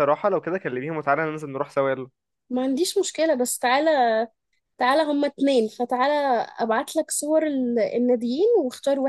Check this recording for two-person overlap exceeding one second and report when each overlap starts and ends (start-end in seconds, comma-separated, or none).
none